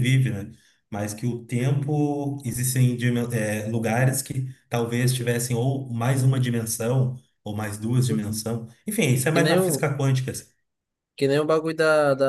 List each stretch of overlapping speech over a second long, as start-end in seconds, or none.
none